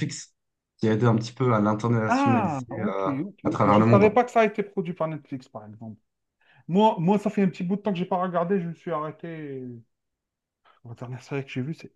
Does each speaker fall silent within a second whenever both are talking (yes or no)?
no